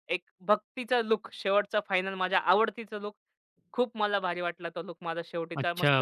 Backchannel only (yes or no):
no